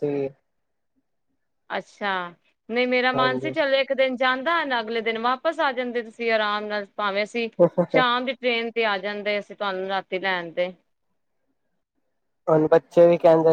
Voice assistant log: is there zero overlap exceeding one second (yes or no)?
yes